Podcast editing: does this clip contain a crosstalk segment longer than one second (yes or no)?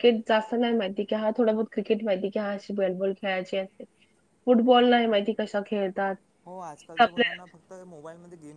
no